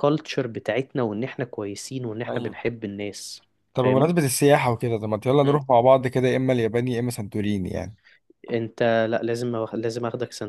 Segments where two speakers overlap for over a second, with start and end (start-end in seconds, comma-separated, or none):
none